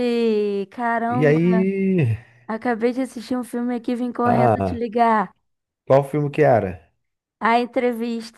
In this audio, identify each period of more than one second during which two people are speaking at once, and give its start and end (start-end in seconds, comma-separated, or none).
none